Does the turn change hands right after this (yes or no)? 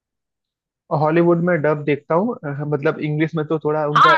yes